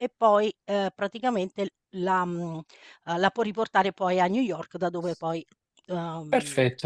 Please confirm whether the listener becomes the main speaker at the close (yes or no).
yes